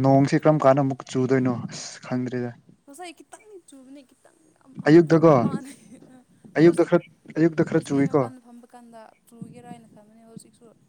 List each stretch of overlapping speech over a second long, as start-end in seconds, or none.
none